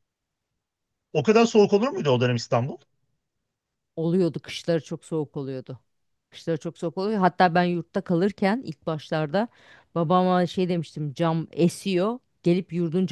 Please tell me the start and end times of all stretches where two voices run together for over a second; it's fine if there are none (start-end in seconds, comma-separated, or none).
none